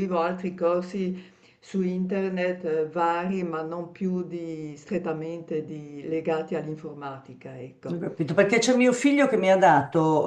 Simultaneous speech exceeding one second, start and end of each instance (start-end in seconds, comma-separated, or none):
none